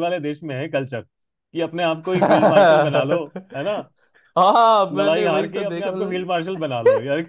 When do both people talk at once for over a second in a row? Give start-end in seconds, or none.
4.9-6.3